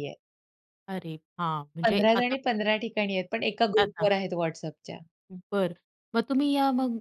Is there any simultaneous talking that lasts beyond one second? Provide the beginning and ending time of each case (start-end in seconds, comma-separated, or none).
none